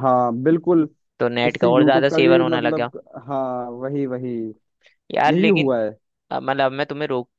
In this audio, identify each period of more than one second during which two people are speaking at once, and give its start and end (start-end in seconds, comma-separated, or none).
1.5-2.9